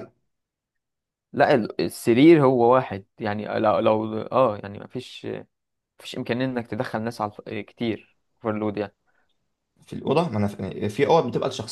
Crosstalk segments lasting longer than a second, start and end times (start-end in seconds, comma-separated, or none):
none